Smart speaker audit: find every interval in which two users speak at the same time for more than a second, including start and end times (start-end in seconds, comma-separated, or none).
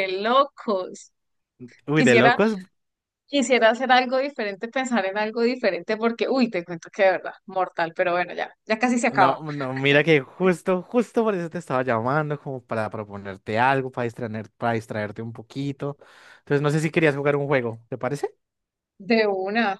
none